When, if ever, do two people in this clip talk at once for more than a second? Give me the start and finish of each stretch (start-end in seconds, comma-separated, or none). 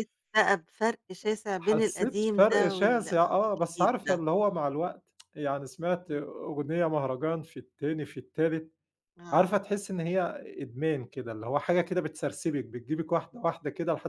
1.6-4.2